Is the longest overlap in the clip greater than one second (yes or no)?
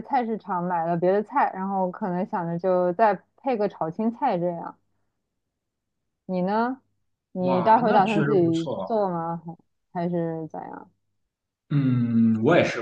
yes